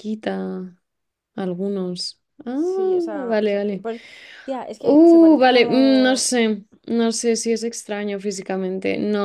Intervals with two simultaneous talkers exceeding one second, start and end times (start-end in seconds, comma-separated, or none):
4.8-6.2